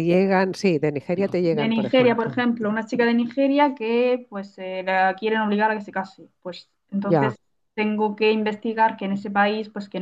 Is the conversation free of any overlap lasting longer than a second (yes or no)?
no